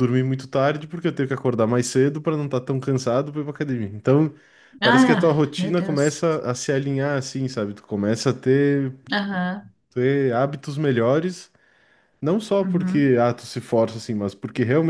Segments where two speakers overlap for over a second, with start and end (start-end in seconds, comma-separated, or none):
4.8-6.2